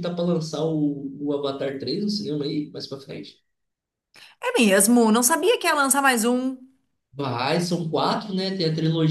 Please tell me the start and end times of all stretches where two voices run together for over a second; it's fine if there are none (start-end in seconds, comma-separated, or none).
none